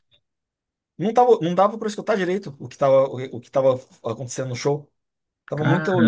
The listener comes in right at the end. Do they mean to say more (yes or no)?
no